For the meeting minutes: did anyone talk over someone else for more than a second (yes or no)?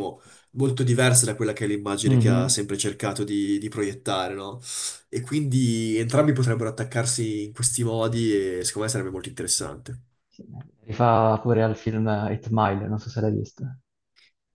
no